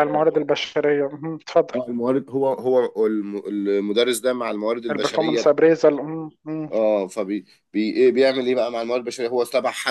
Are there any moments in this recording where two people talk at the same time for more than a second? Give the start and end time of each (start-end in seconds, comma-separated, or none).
none